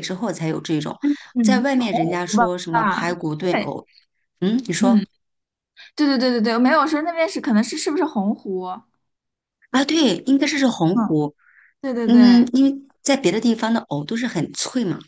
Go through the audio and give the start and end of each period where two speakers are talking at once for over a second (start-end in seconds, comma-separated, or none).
1.4-3.7